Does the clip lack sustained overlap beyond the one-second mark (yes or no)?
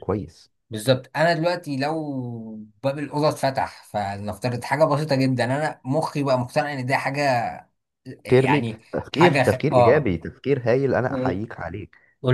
no